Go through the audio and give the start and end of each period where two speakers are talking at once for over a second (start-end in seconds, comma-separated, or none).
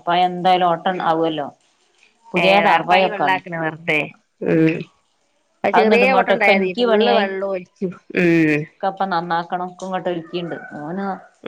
5.8-7.2